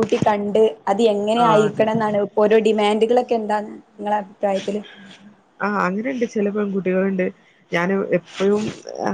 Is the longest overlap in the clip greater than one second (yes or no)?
no